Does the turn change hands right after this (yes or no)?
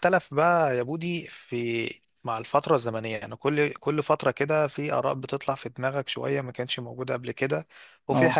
no